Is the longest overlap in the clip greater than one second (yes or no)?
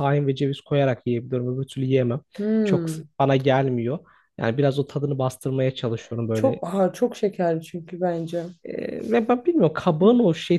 no